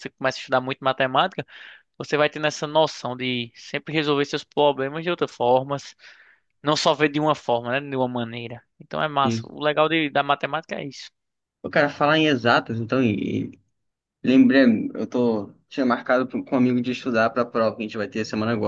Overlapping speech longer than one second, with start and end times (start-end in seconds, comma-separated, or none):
none